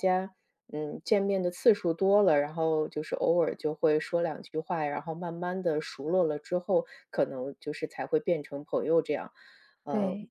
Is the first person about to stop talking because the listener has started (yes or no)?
no